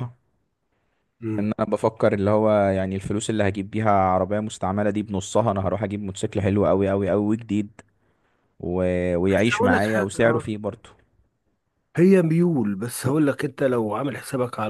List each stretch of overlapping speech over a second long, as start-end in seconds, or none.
9.2-10.4